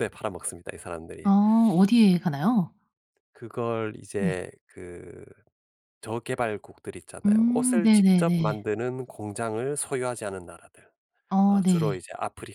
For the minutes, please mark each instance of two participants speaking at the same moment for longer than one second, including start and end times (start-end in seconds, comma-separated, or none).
7.2-8.6